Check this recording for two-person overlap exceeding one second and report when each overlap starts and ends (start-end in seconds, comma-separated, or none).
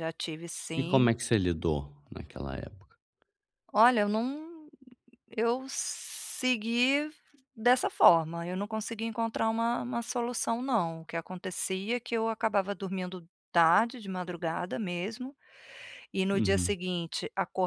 none